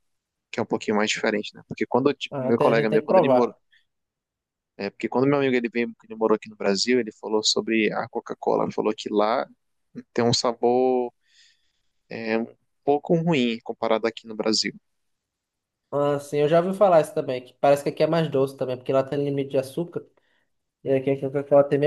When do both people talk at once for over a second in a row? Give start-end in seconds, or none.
2.3-3.5